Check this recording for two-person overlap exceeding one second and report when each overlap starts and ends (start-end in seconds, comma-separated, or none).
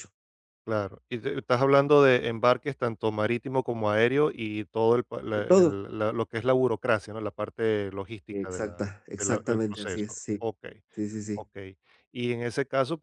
8.3-10.5